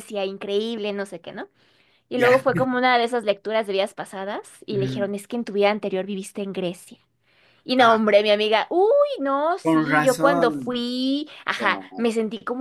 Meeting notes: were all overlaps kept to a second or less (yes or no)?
no